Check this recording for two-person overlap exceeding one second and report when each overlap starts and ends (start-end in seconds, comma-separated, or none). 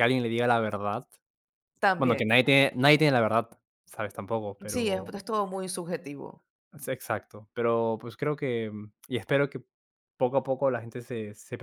none